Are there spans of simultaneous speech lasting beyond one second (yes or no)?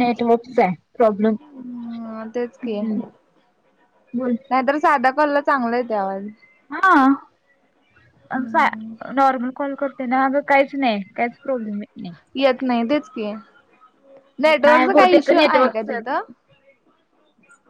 yes